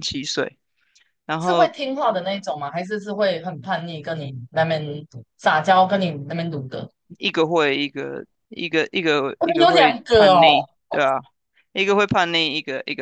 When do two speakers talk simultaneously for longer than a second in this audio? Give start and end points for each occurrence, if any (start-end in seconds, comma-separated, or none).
9.4-10.7